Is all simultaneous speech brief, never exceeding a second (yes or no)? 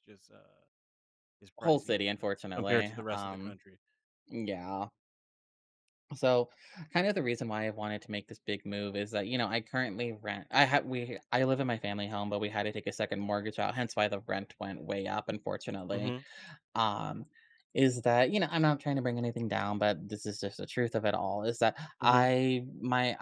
no